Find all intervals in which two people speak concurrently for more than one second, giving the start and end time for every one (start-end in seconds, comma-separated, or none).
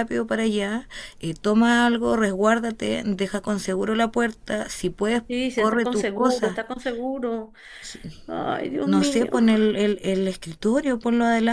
5.3-6.6